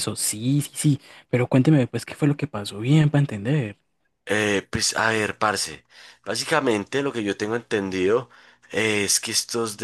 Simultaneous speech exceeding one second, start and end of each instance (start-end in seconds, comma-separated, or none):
none